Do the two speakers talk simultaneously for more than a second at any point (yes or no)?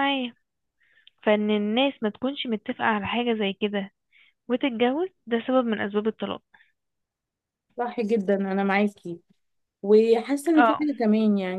no